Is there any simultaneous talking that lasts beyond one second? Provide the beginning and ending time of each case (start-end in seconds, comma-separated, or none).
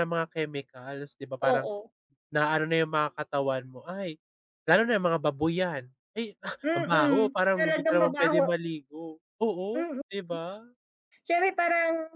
6.7-8.5